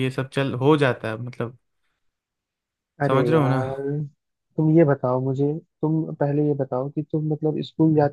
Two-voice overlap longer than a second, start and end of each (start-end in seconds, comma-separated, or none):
none